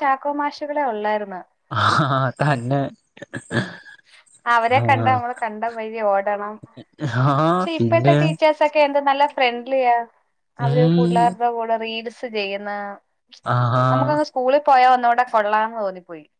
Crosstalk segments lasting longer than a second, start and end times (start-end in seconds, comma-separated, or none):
none